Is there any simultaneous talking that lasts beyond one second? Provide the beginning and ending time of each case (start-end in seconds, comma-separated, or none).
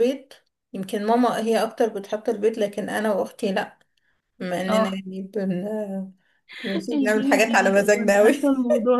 6.9-8.3